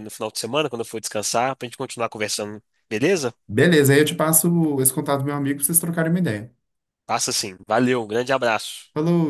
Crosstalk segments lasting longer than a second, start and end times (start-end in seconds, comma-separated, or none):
none